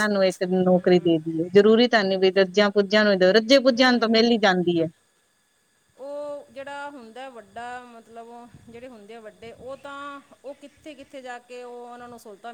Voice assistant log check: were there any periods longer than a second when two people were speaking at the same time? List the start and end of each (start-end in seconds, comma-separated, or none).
none